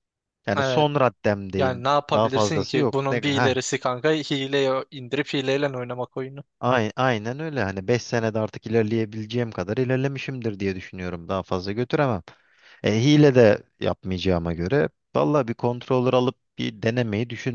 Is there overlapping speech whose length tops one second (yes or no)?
yes